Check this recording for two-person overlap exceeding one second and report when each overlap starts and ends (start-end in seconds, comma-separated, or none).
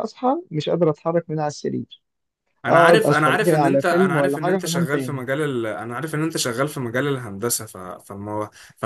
2.7-5.2